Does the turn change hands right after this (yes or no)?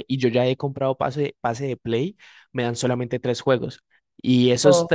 no